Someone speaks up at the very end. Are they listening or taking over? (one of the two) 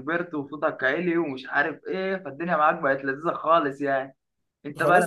taking over